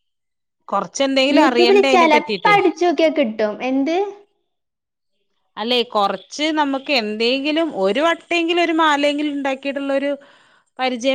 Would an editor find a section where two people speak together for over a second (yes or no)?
no